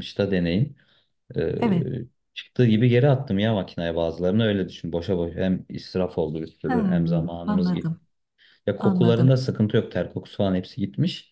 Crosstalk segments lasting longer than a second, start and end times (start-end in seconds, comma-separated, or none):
6.7-7.9